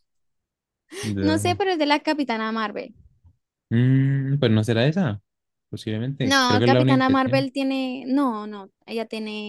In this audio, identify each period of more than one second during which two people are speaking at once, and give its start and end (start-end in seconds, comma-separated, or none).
6.2-7.5